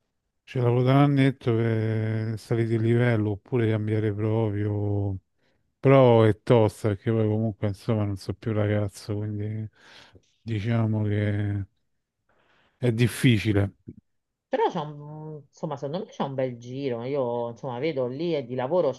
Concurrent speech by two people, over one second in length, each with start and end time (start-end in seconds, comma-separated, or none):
none